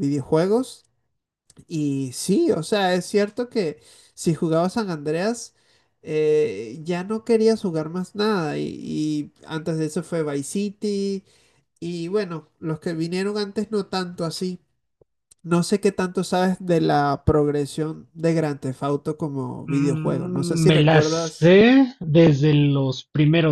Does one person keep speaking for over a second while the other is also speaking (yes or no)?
yes